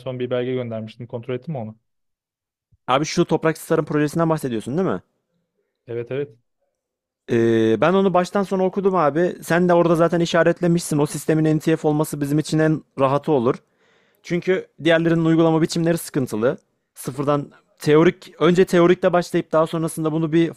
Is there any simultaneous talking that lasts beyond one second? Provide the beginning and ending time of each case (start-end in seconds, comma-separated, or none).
none